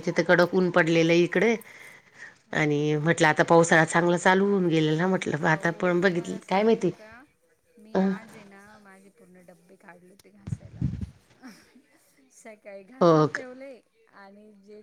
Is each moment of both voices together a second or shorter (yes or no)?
yes